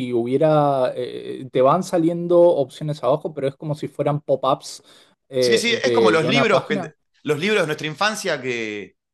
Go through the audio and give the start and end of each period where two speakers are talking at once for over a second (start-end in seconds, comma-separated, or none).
5.4-7.0